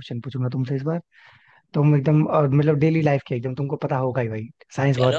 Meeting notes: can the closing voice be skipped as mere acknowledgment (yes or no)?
yes